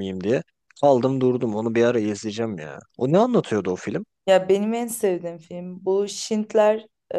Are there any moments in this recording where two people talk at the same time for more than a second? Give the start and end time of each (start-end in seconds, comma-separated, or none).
none